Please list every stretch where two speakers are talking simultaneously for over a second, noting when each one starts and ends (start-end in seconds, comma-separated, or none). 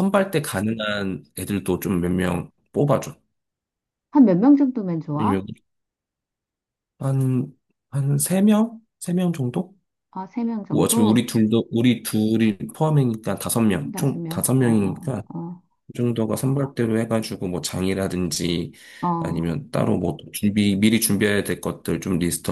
13.9-15.2